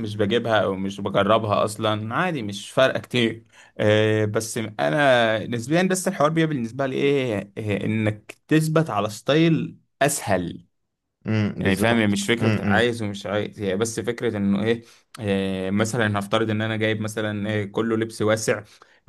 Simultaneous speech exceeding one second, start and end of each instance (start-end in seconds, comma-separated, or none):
11.6-12.9